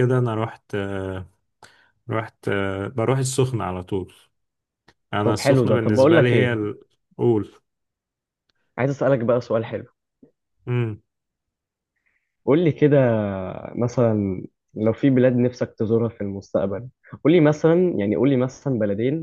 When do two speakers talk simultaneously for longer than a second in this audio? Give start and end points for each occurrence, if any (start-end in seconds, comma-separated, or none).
5.2-6.6